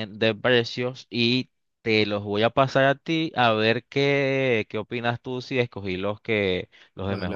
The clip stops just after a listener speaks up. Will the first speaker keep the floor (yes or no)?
no